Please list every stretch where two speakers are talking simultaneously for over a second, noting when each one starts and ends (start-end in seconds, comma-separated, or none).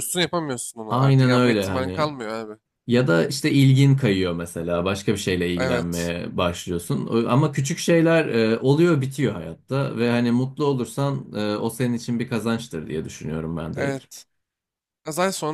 0.9-2.1